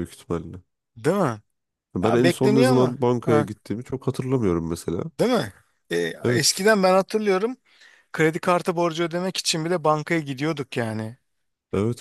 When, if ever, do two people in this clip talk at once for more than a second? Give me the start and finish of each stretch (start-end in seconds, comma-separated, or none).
2.0-3.5